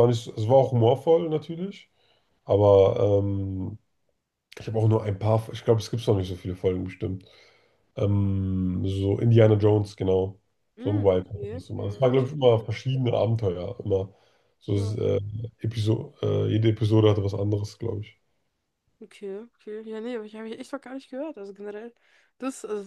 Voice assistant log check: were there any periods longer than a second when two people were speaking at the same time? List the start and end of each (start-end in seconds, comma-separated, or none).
10.8-12.7